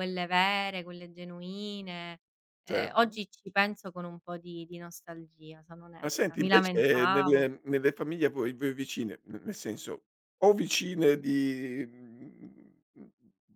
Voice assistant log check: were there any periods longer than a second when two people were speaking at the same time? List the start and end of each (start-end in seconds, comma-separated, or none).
6.0-7.5